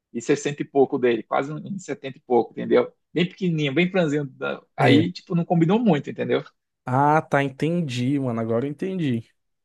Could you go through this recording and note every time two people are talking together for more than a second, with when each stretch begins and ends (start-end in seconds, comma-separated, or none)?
none